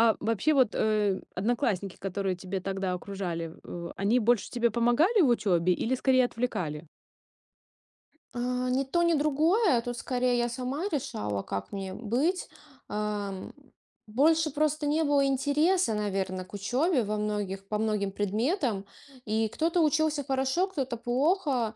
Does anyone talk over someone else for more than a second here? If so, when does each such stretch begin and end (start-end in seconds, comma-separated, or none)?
none